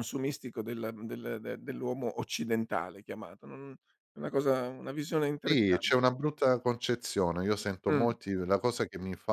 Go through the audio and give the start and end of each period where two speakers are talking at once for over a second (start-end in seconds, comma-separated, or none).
none